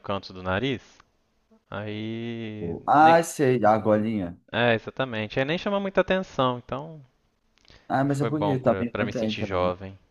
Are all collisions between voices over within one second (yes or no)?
no